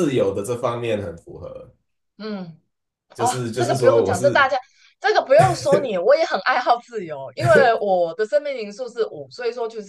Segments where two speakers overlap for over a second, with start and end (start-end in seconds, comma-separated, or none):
3.2-4.5